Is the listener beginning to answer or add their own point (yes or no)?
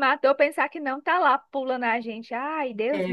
yes